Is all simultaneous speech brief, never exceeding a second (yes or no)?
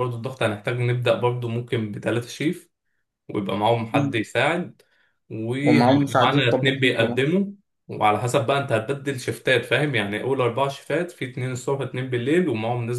no